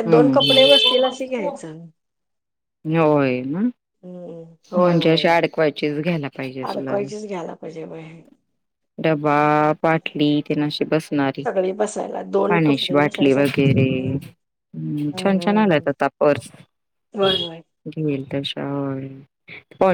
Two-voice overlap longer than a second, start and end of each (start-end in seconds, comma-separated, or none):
12.5-14.2